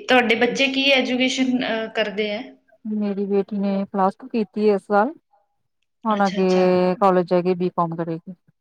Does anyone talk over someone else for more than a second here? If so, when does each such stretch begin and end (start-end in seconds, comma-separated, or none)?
none